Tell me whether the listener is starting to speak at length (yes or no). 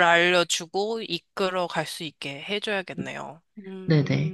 yes